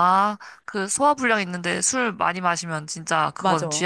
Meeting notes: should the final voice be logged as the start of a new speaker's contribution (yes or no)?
yes